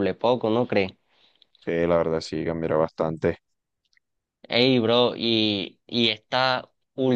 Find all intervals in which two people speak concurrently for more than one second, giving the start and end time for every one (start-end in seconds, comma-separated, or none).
none